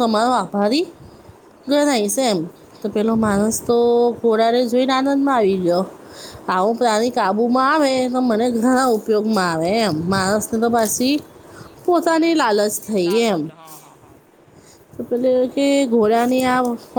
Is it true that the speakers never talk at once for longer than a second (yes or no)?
no